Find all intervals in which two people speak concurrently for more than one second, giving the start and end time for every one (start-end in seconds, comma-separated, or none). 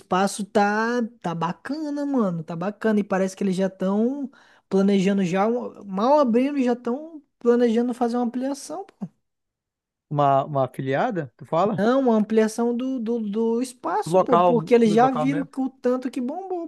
14.1-15.5